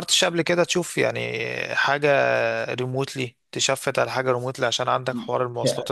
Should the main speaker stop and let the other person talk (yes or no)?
yes